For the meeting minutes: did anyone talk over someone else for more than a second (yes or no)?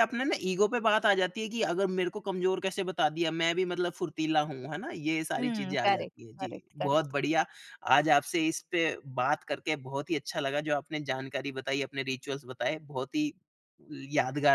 yes